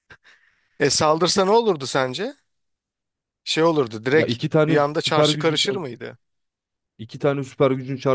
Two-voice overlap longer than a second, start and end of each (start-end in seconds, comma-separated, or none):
4.1-5.8